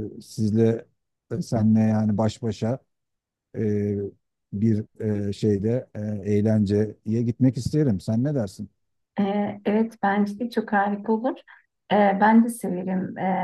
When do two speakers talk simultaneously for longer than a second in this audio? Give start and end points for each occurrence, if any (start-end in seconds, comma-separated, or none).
none